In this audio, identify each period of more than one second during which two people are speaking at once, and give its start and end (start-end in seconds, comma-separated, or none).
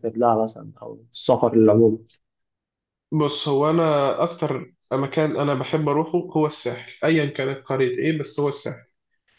none